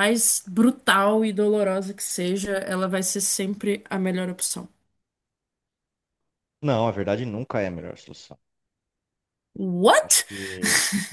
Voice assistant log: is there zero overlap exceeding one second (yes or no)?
yes